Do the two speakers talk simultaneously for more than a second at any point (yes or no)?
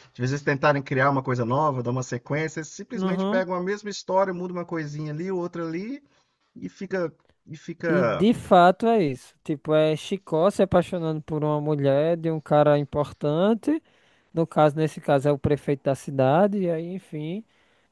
no